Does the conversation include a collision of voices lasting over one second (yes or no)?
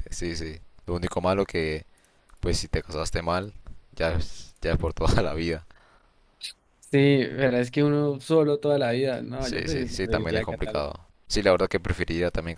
yes